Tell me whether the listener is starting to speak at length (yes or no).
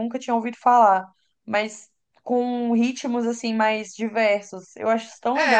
yes